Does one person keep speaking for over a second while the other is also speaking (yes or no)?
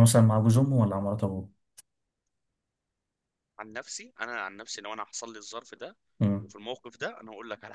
no